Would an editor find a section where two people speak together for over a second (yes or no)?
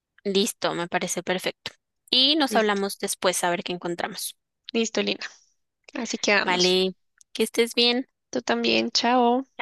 no